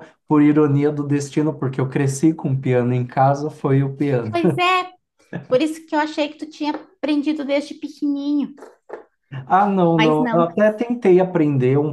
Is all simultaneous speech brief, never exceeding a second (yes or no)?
yes